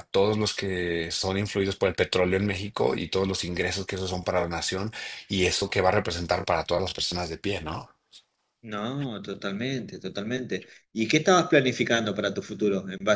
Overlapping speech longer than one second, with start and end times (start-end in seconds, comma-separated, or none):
none